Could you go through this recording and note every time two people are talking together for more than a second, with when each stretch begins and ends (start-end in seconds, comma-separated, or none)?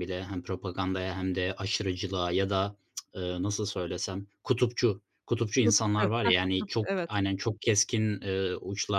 5.6-7.2